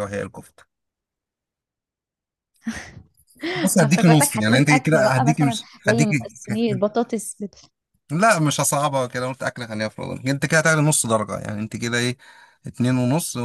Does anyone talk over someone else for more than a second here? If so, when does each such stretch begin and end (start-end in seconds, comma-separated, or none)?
3.5-6.1